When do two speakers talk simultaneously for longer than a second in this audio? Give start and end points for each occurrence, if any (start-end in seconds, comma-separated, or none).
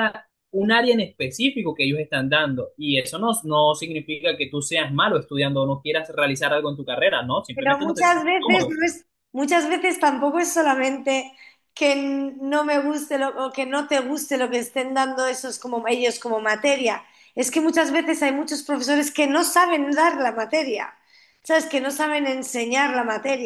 7.5-8.8